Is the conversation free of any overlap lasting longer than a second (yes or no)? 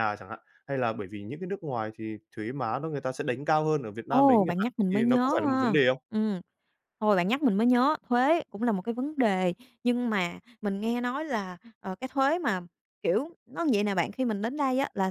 no